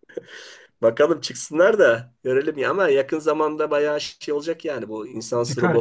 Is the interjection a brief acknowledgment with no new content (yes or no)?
no